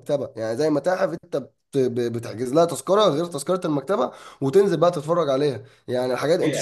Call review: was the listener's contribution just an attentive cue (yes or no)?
no